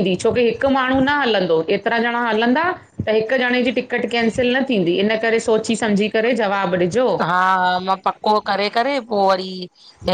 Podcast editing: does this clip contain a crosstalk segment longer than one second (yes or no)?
no